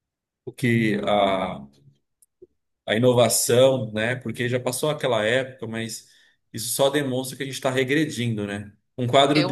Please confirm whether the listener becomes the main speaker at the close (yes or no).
no